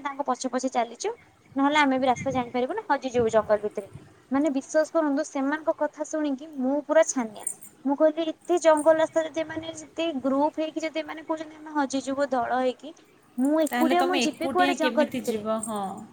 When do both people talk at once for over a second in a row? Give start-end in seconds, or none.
13.7-15.4